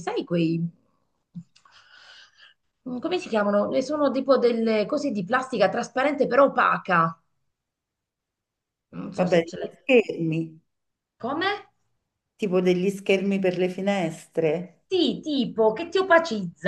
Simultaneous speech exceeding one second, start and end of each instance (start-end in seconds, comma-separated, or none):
none